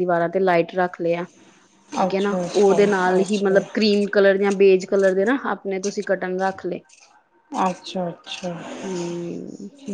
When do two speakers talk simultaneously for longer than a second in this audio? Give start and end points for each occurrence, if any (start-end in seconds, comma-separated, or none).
2.1-3.6